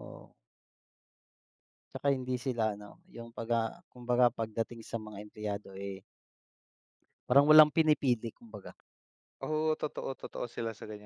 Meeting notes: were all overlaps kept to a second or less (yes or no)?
yes